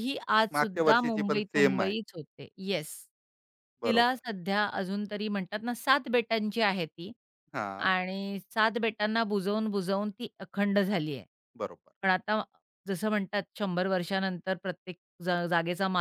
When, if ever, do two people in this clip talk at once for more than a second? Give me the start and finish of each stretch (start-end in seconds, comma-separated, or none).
0.5-1.9